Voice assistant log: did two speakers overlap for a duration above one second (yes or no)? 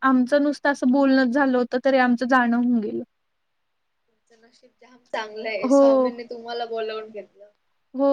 no